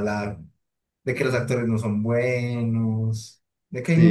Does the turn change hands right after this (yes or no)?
no